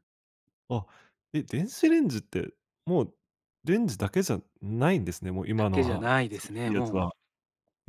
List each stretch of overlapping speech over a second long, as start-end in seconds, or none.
5.6-7.1